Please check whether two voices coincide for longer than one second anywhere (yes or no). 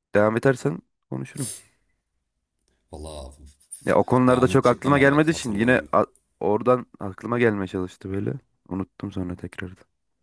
yes